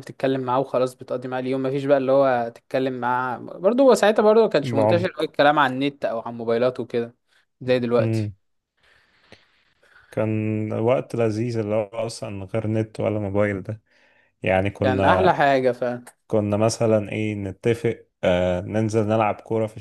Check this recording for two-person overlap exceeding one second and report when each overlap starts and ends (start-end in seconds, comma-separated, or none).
none